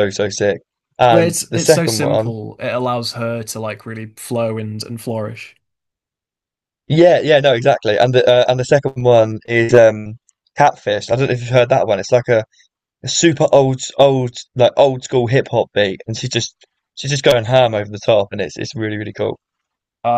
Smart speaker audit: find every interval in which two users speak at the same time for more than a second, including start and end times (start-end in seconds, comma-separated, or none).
1.1-2.3